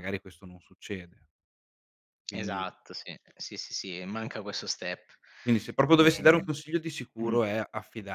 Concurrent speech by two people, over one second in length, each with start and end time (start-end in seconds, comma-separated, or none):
none